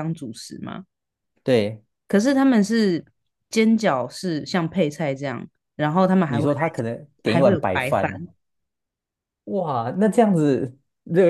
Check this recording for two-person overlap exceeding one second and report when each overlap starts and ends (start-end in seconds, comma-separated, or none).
6.3-8.1